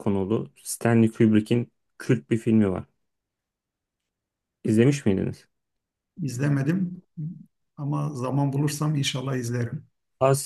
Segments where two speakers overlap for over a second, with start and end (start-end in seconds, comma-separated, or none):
none